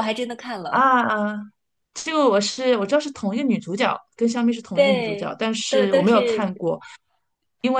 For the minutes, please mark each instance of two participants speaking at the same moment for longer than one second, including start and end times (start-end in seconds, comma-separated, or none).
4.7-6.6